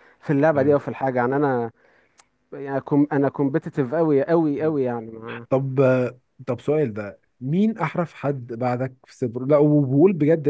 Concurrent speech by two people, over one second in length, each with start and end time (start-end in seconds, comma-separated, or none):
none